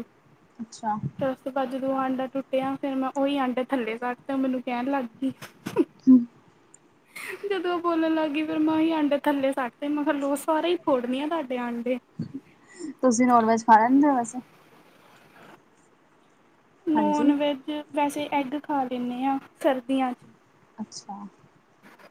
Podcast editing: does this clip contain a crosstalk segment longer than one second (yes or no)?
no